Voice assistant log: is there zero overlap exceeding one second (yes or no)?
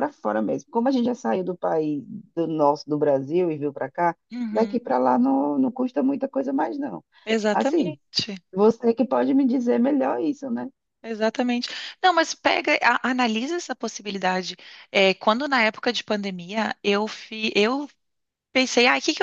yes